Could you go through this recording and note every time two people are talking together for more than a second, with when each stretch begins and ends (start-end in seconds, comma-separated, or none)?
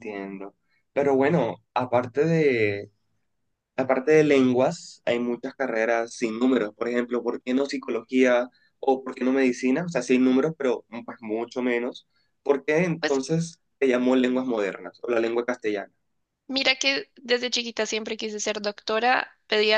none